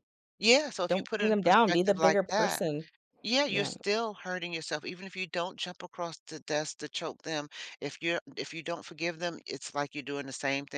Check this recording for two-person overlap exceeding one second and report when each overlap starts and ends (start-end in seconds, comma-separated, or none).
0.9-2.6